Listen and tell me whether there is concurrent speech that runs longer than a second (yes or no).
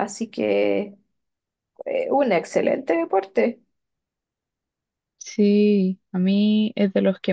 no